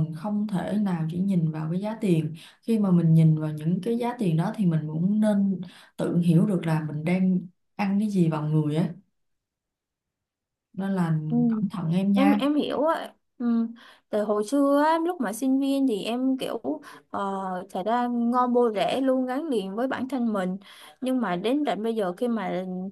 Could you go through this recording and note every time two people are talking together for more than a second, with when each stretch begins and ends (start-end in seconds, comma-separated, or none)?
none